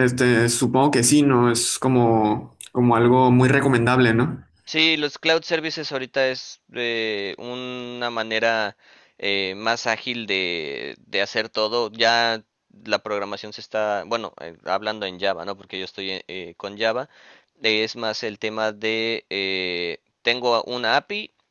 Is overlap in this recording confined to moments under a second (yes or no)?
yes